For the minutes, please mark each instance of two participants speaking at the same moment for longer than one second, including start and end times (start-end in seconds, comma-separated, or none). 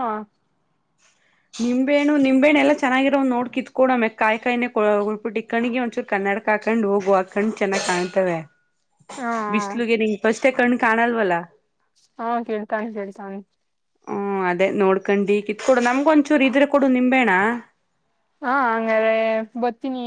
none